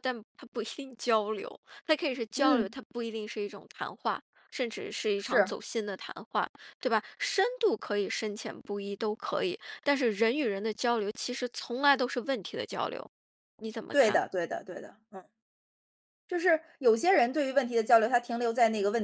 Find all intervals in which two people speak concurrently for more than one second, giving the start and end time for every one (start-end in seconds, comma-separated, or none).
none